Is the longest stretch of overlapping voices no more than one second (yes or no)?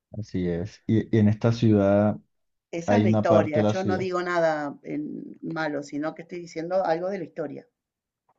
no